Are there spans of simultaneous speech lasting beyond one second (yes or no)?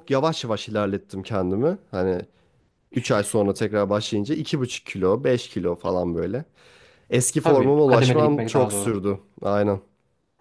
yes